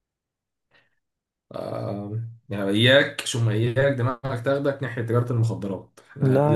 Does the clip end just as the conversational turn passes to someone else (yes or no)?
no